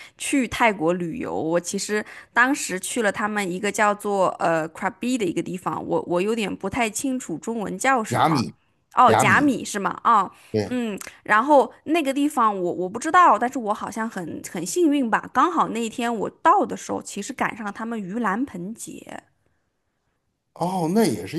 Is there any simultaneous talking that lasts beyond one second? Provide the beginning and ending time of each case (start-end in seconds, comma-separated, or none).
none